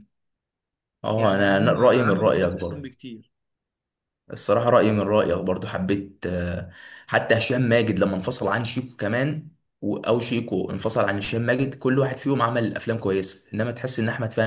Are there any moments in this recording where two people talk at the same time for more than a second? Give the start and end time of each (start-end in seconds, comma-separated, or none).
1.1-2.9